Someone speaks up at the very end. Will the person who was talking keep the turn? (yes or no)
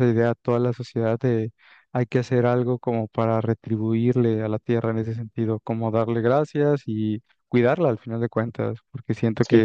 no